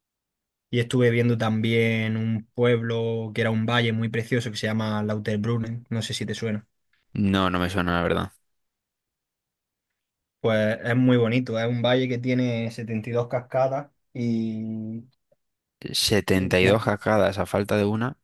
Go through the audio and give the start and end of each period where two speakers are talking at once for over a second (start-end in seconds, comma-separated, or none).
none